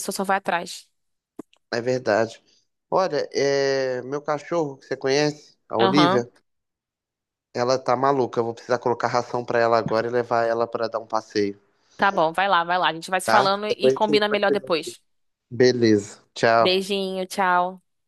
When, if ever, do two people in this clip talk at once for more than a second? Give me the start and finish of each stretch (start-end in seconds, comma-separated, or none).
13.2-14.7